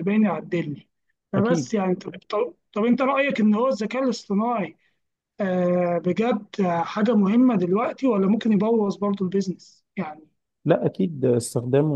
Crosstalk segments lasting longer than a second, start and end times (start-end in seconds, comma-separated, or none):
none